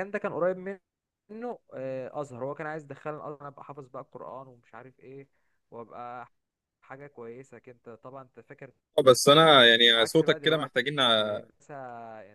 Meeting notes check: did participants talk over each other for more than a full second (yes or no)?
yes